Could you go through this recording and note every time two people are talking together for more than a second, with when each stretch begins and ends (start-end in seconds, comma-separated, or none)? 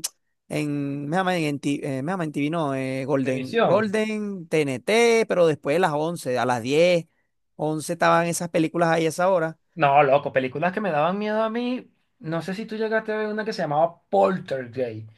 none